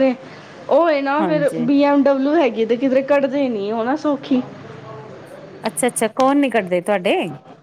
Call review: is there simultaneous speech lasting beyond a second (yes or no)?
no